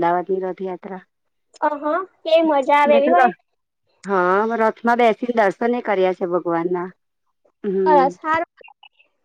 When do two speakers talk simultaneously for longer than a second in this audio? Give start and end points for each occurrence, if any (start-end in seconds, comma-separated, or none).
none